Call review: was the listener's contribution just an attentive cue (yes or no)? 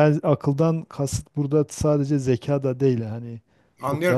no